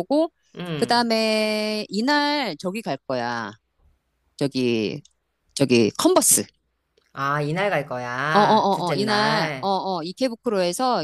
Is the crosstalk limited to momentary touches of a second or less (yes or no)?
no